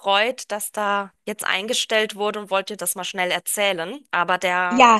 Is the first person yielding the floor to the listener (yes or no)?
yes